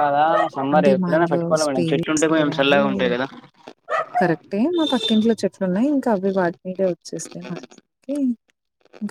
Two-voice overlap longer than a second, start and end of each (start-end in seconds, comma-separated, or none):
0.7-2.8